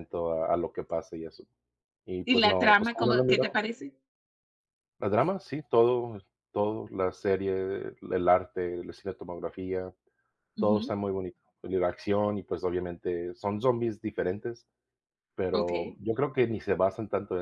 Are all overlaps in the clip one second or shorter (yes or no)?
no